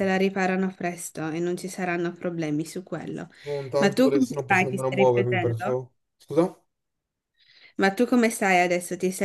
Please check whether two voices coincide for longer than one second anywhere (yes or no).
yes